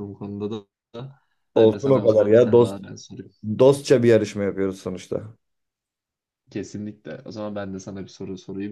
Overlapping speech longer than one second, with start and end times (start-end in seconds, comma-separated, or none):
1.6-2.8